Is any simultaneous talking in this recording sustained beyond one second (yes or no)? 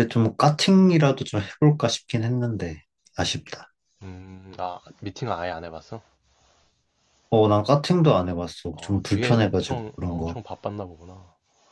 yes